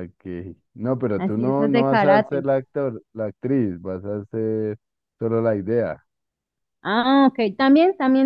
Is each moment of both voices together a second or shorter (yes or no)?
no